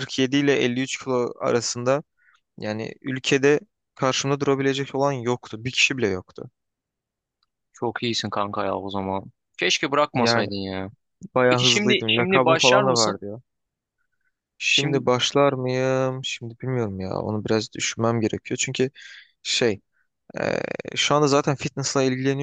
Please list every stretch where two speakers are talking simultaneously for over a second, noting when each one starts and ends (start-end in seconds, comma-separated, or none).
11.5-13.2